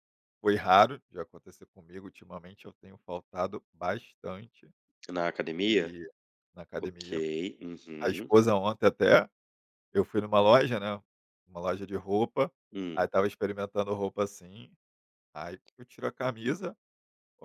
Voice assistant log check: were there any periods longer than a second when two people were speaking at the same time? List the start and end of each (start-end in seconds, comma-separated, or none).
none